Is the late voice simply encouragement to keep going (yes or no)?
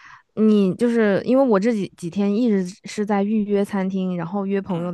yes